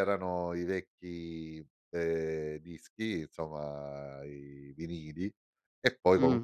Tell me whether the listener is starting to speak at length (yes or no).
no